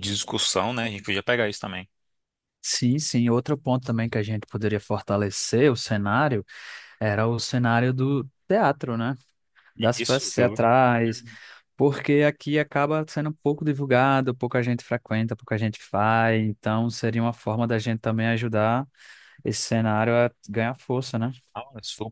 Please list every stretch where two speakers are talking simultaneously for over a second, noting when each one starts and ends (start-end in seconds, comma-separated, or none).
9.9-11.2